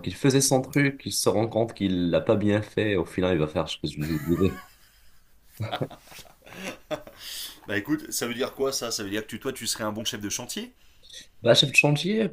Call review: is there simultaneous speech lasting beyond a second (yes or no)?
no